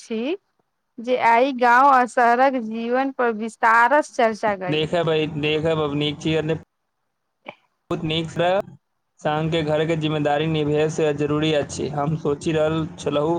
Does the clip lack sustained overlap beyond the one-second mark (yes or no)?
yes